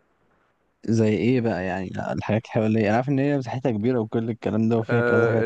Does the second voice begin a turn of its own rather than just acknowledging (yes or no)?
yes